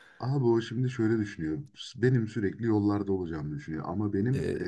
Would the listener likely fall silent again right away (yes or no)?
yes